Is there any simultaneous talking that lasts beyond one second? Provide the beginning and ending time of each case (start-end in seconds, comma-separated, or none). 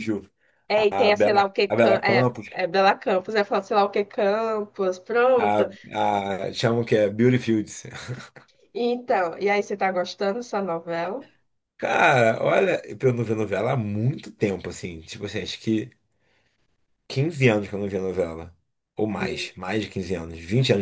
0.9-2.5